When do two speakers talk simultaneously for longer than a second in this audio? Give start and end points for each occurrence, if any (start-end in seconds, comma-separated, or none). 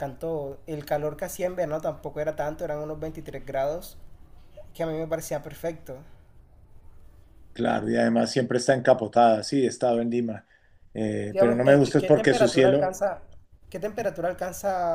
11.3-12.9